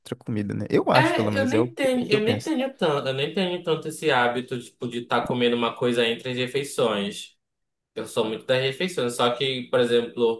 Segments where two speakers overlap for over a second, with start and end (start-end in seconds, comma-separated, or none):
0.9-2.5